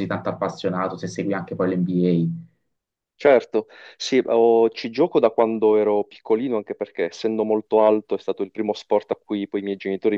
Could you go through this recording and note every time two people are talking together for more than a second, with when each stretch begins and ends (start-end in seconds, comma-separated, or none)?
none